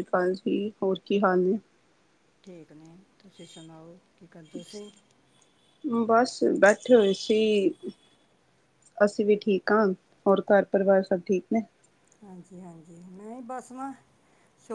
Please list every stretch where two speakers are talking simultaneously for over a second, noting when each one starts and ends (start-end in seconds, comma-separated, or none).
none